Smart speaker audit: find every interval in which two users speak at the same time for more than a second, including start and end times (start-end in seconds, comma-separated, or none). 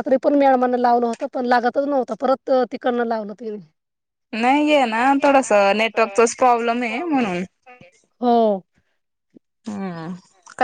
none